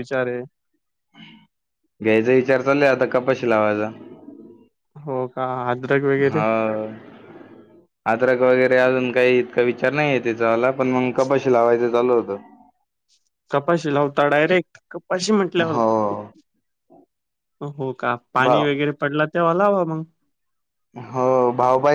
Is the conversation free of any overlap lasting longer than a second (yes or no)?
yes